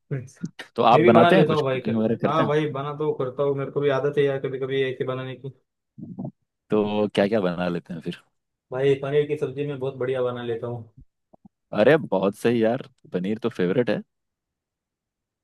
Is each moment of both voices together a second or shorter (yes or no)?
no